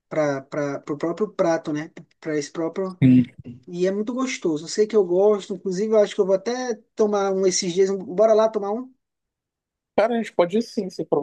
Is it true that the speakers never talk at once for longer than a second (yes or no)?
yes